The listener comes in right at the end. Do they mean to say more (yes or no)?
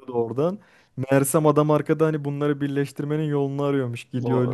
no